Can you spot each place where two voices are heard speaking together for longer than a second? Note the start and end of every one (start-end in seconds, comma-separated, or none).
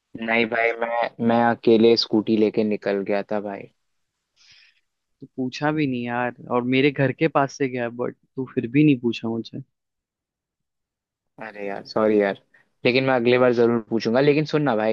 none